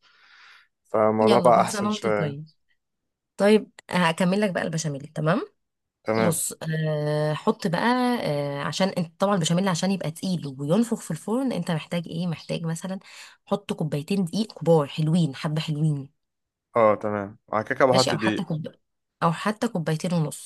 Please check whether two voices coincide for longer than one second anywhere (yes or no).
yes